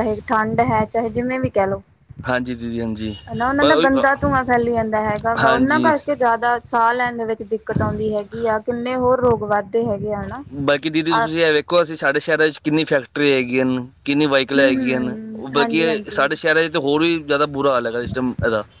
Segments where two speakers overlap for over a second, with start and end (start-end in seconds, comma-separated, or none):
14.6-16.3